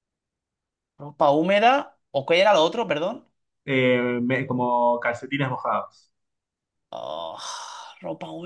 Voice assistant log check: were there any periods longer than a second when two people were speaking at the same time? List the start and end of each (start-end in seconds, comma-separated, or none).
none